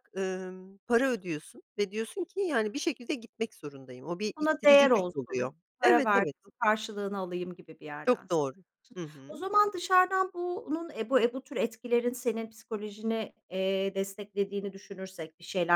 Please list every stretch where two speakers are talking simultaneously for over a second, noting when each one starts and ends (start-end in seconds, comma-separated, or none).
4.4-6.3